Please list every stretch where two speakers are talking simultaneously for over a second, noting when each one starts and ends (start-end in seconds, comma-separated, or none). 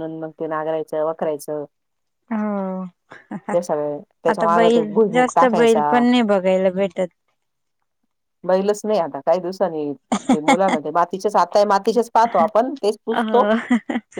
4.3-6.0